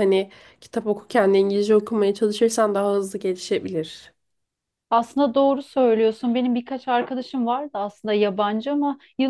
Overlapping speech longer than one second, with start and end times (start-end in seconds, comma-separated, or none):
none